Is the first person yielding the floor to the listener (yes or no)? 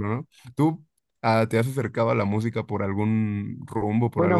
yes